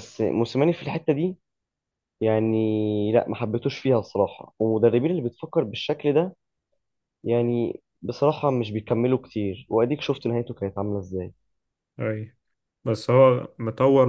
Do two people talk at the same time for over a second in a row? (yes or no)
no